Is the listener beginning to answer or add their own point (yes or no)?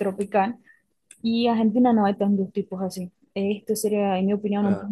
no